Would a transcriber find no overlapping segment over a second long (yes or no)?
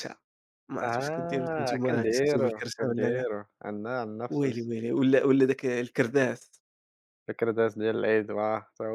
no